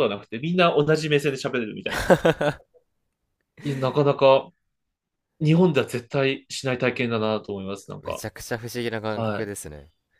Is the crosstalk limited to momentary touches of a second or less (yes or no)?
yes